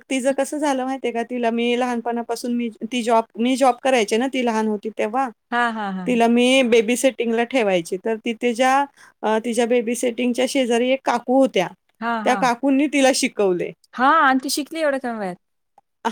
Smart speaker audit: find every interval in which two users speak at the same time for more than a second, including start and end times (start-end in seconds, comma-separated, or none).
none